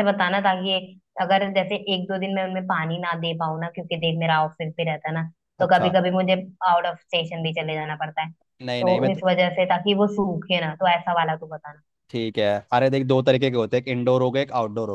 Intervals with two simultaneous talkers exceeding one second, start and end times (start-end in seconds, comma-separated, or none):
none